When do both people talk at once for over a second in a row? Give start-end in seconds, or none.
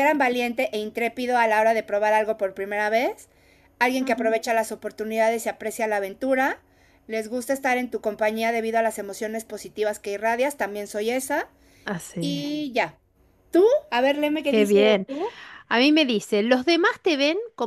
none